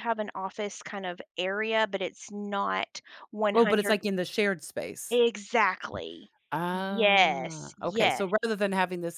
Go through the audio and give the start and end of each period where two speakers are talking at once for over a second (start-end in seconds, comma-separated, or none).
6.8-8.2